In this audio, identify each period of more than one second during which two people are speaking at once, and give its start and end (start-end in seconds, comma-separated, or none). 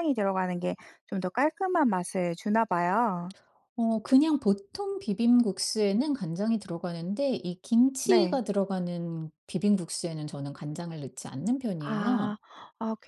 none